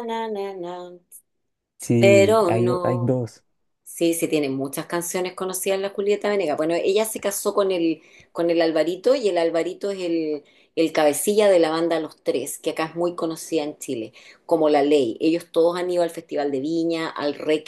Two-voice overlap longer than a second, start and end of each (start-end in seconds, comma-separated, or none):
2.0-3.2